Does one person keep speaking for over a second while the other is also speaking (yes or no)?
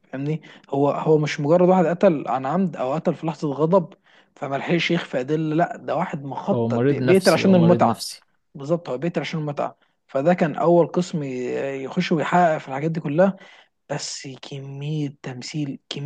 yes